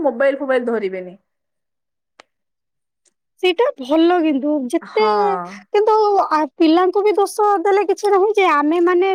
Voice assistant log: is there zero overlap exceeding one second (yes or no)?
yes